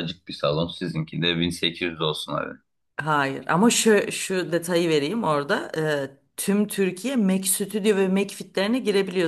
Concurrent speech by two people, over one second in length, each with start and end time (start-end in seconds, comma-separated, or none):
none